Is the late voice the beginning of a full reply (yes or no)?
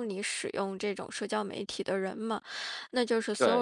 no